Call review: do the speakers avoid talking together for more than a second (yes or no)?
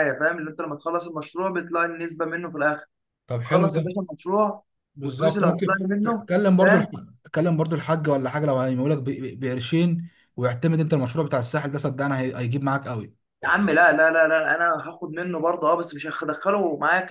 no